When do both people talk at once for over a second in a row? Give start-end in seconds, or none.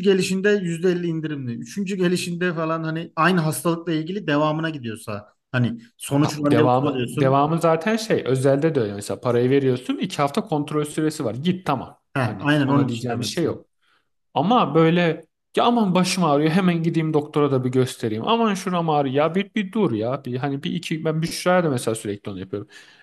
6.2-7.4, 12.1-13.6